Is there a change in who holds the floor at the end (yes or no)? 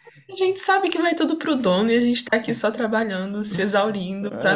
yes